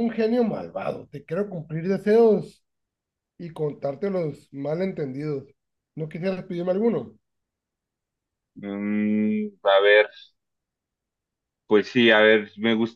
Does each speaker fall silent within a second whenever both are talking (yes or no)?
yes